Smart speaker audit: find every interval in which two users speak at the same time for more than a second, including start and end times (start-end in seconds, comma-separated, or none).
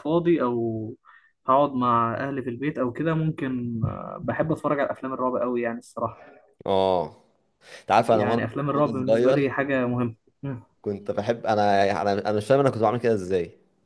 8.1-9.5